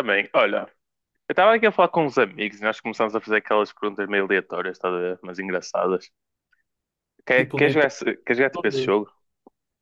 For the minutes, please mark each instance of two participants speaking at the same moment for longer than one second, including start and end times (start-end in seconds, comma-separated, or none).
7.3-9.0